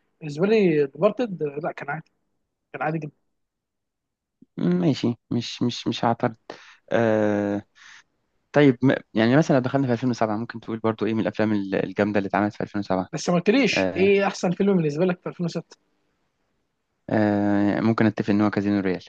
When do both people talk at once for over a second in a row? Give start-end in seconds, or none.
none